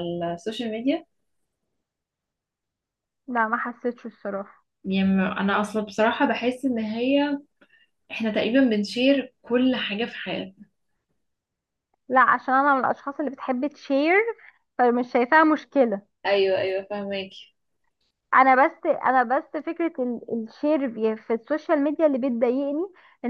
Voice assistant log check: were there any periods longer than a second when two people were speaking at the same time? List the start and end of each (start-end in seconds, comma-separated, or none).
none